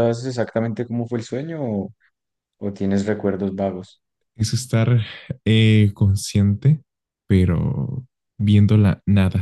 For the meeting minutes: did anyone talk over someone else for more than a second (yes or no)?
no